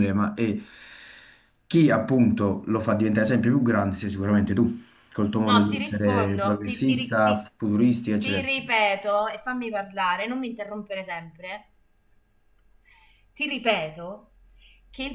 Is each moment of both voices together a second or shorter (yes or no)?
no